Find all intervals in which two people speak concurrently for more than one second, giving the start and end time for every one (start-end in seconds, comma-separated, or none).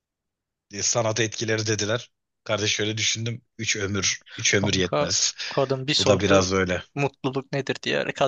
none